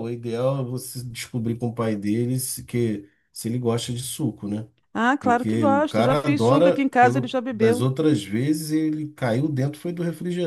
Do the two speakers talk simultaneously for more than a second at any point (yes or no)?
yes